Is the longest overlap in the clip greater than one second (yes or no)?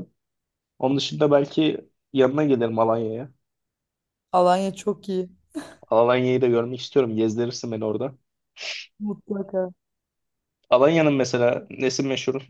no